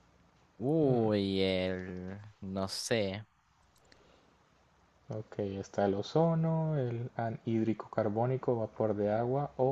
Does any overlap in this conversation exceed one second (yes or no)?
no